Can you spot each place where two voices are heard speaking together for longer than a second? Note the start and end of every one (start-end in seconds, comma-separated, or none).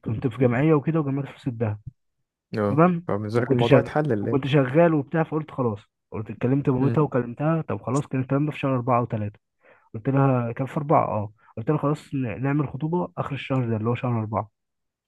2.7-4.6